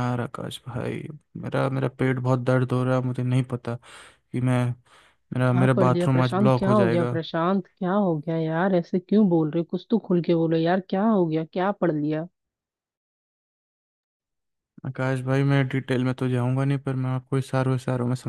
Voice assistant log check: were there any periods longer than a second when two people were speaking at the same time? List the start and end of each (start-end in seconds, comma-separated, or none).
5.5-7.2